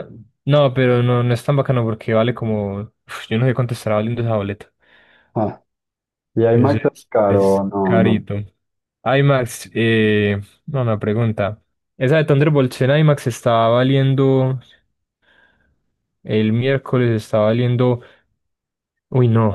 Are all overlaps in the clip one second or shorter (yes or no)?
no